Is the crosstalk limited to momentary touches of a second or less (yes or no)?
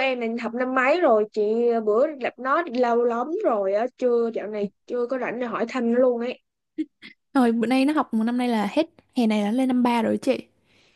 yes